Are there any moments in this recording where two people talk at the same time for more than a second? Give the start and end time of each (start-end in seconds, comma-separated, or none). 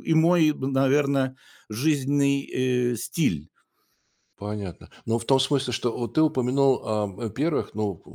none